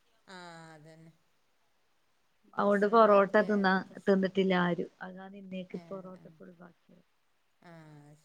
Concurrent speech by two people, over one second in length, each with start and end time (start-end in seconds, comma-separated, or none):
2.6-4.3